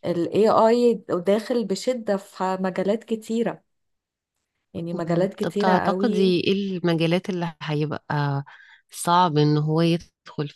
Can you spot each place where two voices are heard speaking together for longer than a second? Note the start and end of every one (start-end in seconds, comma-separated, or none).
4.9-6.3